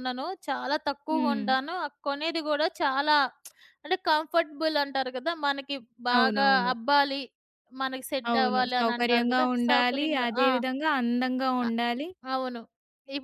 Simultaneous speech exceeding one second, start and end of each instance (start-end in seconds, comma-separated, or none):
8.3-10.5